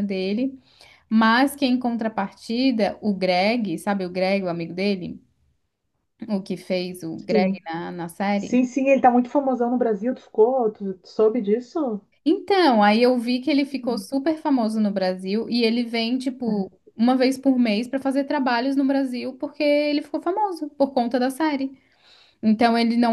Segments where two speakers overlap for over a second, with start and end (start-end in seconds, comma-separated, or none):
none